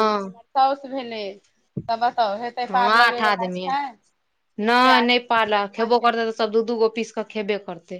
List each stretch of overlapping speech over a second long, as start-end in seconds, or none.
4.6-6.5